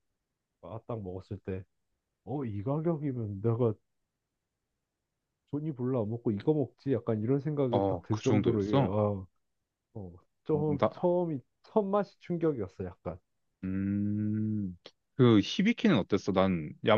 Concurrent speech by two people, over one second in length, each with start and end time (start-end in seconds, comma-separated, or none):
7.7-8.9